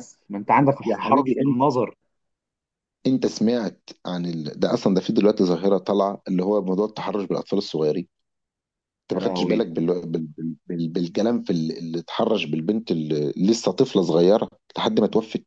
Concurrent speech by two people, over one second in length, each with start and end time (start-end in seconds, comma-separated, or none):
none